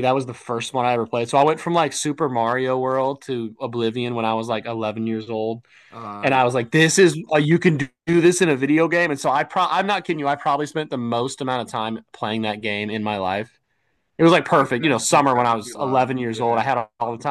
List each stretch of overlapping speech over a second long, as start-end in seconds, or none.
14.3-16.7